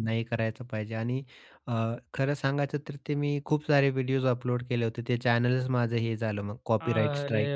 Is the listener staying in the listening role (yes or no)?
no